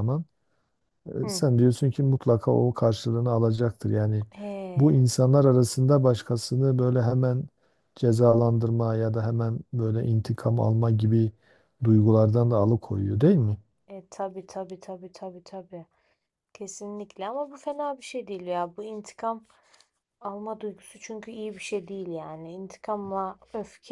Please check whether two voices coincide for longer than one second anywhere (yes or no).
no